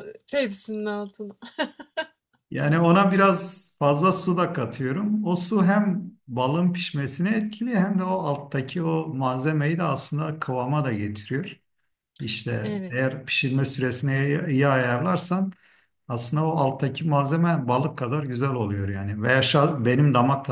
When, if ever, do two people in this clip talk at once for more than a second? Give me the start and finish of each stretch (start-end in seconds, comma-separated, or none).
none